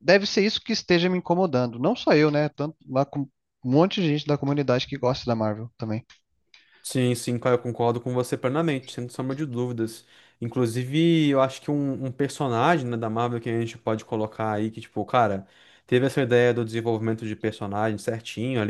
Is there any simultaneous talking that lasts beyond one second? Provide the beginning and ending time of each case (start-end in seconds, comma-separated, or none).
none